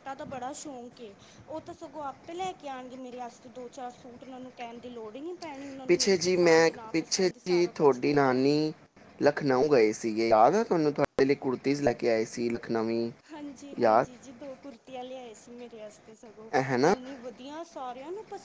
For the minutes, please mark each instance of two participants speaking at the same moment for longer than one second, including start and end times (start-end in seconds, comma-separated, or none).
5.9-8.4